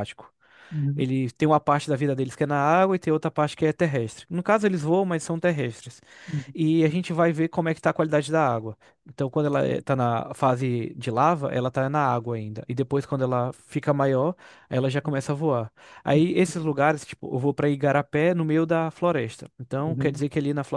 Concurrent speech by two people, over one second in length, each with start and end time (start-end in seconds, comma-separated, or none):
none